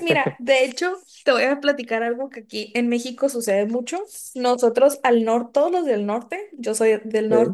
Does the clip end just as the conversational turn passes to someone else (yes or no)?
no